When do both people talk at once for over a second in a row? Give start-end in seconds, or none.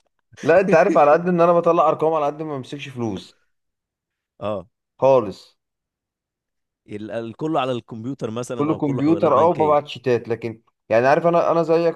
8.6-9.8